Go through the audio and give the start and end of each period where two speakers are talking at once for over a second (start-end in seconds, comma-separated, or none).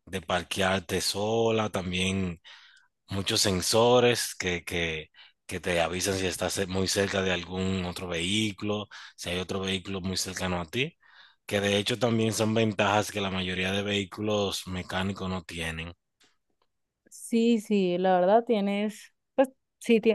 none